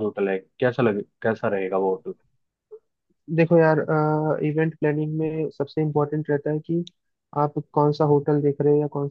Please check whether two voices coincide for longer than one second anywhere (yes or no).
no